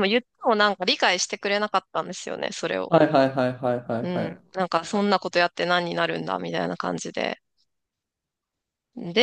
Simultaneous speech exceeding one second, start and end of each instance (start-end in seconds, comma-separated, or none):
none